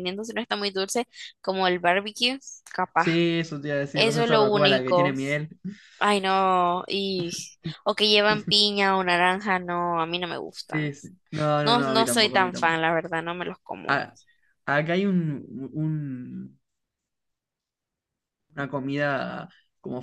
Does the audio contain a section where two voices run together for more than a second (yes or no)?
yes